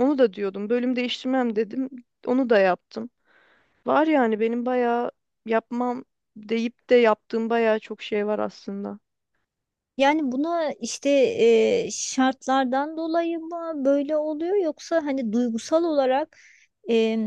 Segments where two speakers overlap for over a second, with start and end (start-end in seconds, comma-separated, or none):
none